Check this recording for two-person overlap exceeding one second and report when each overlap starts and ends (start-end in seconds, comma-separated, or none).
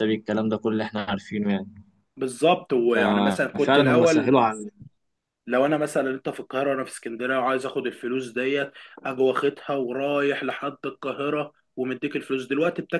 2.9-4.3